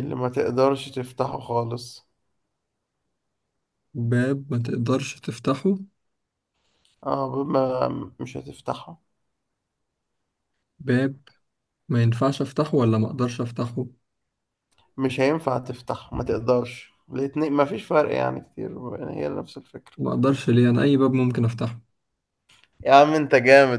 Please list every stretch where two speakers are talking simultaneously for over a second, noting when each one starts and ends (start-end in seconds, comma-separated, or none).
none